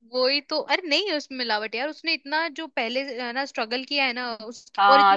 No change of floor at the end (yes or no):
no